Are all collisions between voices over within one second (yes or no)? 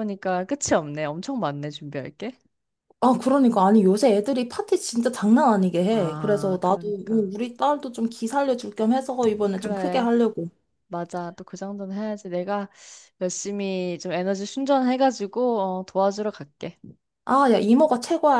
no